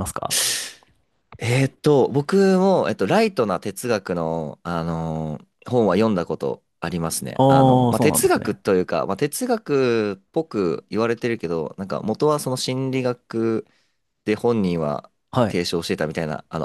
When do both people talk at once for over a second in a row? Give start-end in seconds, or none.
7.3-8.6